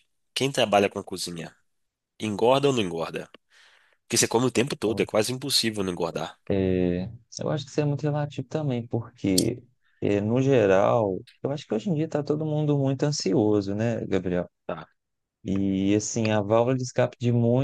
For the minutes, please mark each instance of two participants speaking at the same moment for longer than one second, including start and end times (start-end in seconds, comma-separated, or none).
none